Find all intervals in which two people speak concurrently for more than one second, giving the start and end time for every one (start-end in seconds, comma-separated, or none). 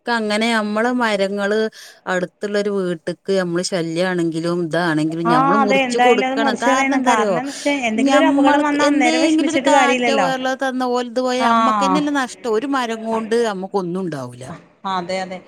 5.3-7.3, 8.1-10.3